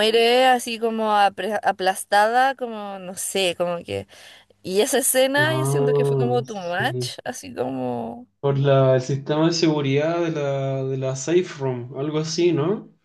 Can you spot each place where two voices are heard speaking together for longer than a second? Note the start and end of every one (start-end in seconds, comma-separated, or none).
5.4-7.1